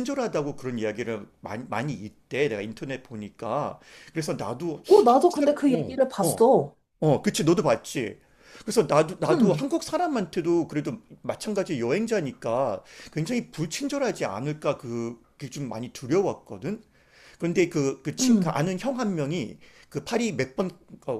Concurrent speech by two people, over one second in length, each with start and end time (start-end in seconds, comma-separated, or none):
4.9-6.5